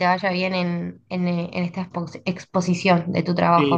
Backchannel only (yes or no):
no